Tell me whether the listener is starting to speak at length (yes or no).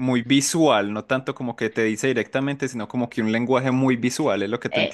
yes